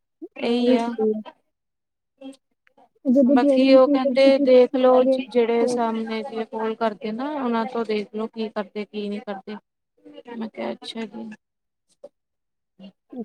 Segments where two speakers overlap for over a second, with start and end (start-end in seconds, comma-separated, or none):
3.4-5.8